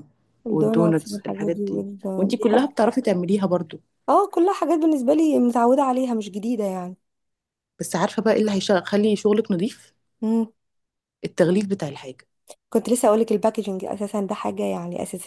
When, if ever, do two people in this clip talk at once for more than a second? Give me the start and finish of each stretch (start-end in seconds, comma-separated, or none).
0.5-2.0